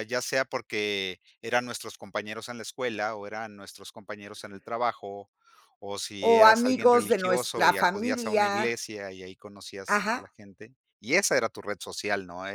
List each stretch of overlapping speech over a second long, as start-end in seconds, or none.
6.2-8.8